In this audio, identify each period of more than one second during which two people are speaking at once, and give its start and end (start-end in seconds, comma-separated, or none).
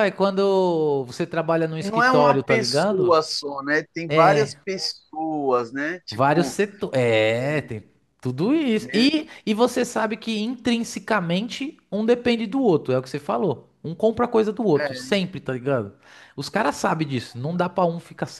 1.8-3.2